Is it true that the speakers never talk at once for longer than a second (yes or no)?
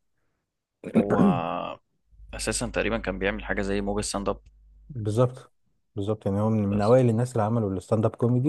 yes